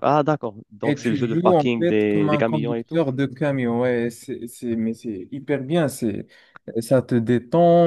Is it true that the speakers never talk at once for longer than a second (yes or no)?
no